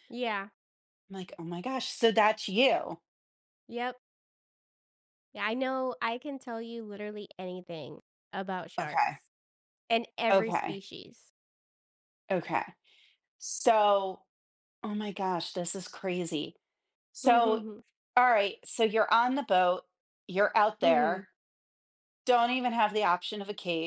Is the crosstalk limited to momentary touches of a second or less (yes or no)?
yes